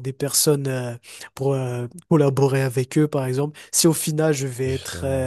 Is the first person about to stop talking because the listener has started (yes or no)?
no